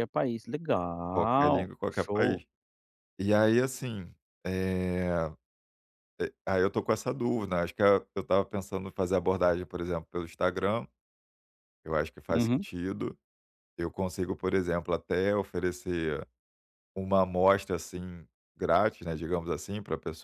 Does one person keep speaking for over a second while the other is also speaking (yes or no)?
yes